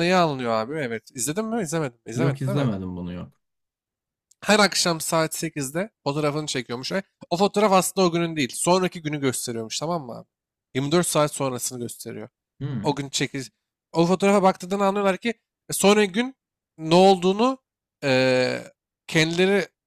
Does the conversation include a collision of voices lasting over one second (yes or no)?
no